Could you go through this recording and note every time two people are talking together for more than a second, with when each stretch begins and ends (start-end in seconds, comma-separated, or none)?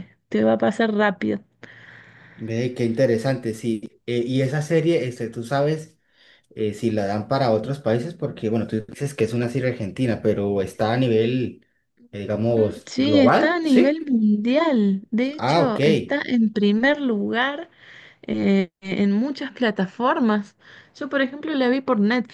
12.6-13.9